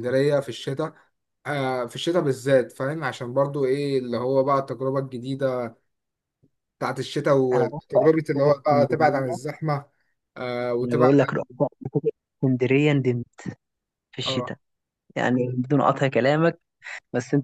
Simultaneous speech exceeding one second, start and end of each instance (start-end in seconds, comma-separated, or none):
7.5-9.4